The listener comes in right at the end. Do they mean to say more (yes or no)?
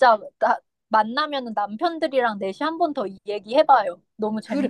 yes